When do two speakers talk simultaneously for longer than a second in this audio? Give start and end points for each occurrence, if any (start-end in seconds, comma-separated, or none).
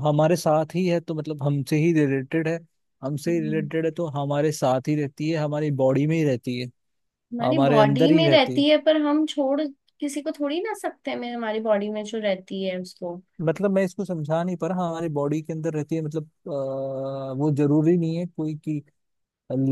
7.4-8.6